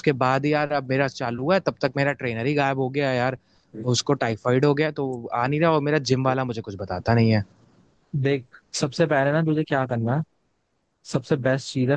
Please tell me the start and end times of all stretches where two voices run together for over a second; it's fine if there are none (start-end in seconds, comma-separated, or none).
none